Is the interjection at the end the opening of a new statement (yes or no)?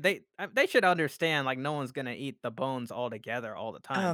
yes